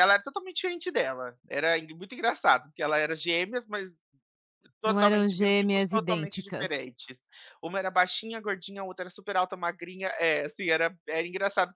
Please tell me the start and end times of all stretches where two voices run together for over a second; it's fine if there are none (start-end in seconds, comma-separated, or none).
4.8-6.9